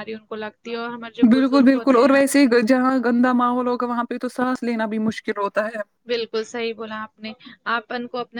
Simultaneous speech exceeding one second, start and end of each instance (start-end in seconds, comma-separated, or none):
none